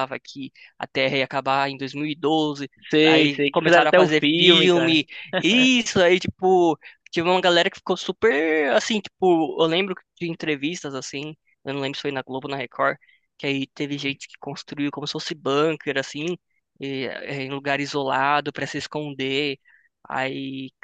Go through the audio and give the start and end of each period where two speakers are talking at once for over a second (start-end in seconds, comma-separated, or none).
3.0-5.0